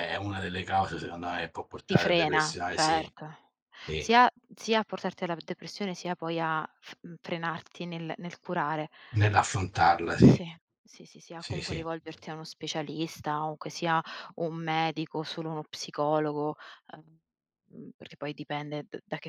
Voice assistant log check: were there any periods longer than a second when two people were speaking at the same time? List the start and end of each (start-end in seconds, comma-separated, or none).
1.9-3.1